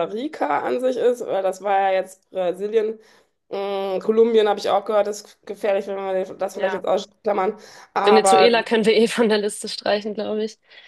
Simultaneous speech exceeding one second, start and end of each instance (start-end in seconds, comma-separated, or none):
none